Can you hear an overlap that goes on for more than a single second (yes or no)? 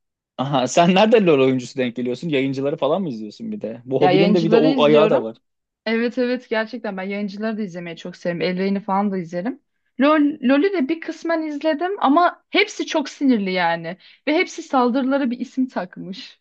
yes